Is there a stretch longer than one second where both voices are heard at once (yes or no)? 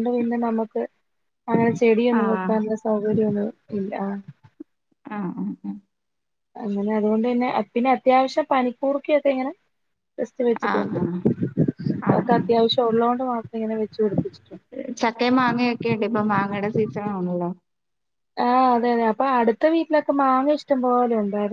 no